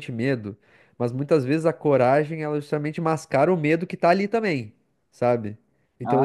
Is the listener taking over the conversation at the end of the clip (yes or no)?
no